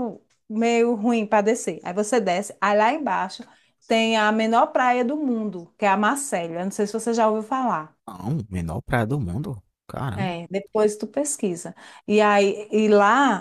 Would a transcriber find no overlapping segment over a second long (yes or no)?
yes